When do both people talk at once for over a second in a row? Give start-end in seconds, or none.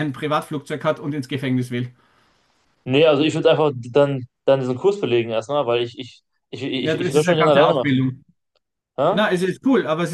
6.8-8.0